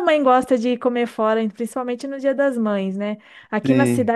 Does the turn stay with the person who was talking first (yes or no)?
yes